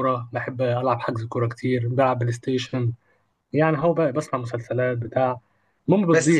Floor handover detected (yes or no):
yes